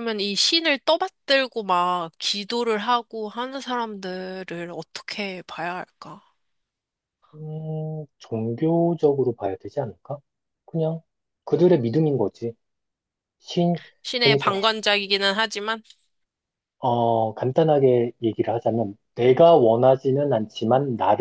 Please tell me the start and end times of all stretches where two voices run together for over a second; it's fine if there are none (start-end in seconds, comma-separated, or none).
none